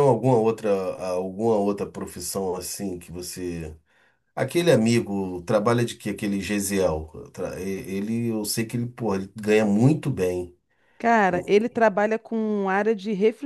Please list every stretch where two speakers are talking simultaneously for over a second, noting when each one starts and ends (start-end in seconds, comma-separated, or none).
none